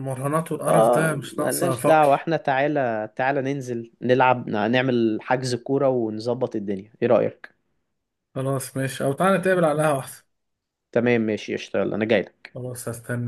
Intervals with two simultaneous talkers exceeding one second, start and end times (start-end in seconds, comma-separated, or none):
0.7-2.1